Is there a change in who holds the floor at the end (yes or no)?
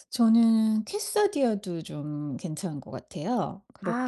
yes